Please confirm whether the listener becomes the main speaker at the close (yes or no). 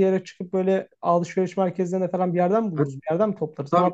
yes